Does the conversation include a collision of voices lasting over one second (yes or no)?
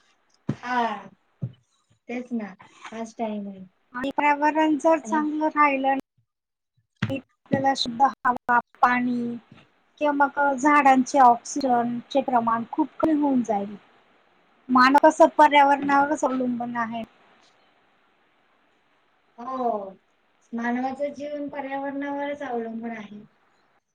no